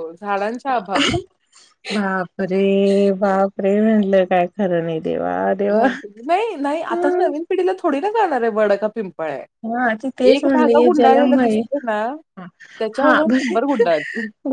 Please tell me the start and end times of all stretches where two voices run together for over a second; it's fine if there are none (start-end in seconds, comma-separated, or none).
10.3-11.6